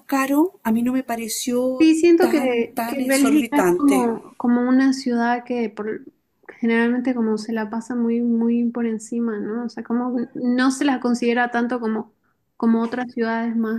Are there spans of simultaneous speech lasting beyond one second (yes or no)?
yes